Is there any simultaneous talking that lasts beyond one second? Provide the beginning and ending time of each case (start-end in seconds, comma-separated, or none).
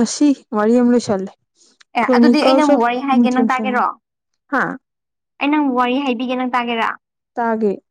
2.0-3.6